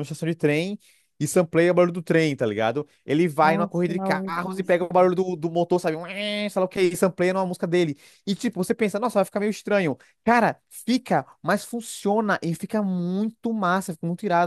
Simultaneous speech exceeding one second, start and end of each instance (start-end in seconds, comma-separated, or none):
3.4-4.9